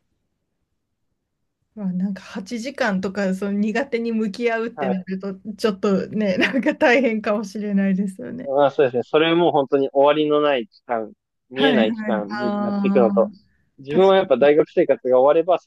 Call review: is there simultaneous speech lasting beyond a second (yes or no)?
yes